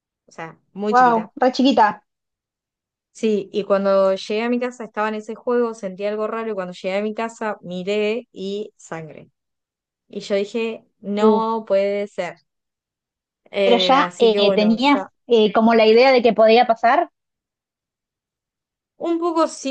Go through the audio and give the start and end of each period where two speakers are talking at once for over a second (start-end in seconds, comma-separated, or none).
13.6-15.1